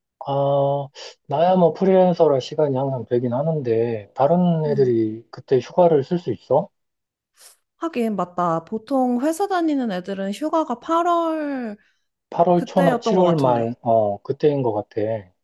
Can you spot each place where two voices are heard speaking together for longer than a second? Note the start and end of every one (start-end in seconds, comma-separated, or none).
12.6-13.8